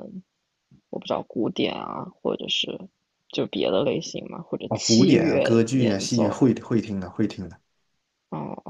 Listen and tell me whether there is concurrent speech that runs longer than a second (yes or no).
yes